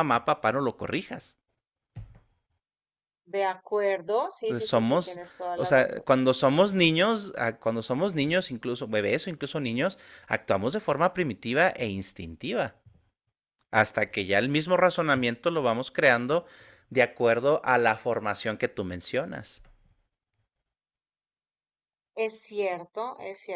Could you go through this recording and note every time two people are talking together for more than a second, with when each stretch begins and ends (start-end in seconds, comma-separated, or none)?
4.4-6.1